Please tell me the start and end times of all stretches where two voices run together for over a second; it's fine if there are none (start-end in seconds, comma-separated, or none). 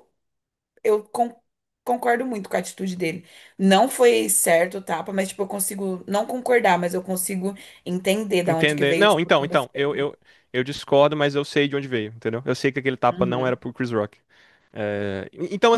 8.5-10.1